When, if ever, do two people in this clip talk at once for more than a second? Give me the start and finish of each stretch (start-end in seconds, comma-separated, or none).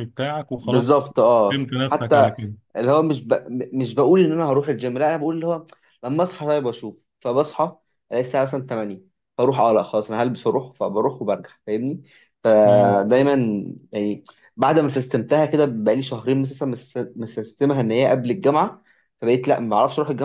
0.6-2.3